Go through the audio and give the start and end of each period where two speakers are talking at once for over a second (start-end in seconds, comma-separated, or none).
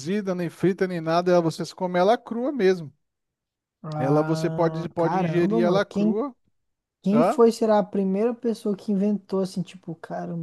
4.0-6.2